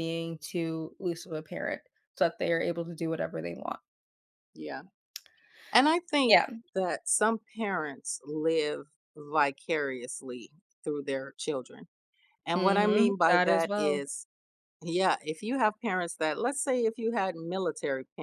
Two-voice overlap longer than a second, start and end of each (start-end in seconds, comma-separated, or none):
12.6-14.0